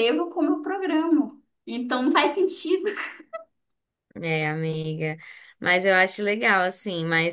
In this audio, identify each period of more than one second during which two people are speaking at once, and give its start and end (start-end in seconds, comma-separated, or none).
none